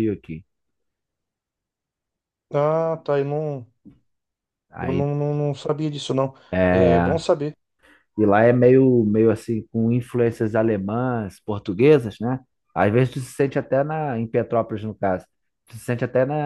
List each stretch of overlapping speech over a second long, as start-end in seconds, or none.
none